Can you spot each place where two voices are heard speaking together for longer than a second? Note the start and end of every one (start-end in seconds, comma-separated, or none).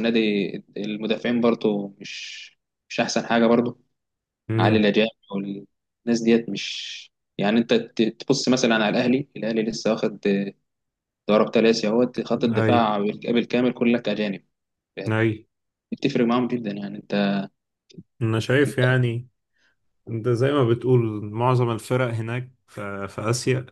none